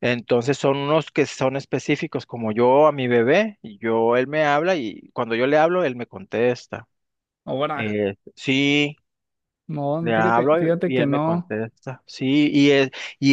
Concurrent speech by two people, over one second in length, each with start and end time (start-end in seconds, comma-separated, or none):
10.0-11.6